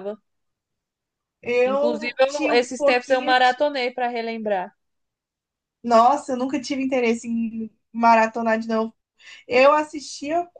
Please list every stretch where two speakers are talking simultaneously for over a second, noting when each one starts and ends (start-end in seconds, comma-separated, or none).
1.6-3.4